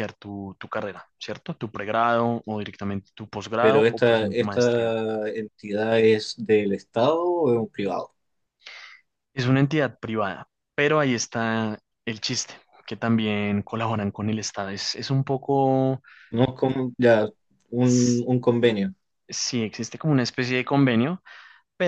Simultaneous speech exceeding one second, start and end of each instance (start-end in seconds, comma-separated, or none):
3.6-5.0